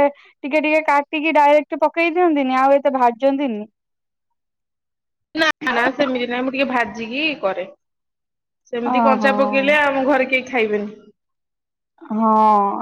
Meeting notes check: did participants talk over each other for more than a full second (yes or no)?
no